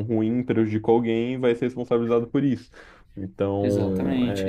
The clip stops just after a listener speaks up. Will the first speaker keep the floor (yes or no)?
no